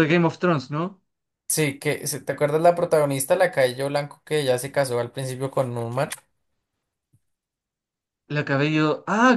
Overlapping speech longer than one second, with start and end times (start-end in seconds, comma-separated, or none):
none